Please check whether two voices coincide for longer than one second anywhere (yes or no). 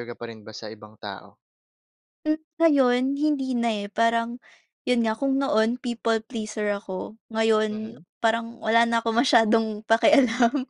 no